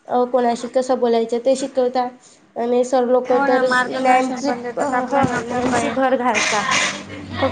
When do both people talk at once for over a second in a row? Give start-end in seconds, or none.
3.3-5.9